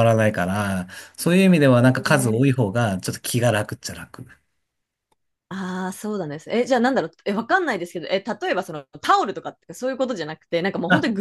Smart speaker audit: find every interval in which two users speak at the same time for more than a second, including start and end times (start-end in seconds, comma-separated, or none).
none